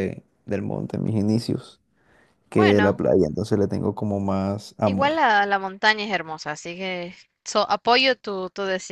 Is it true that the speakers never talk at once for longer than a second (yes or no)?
yes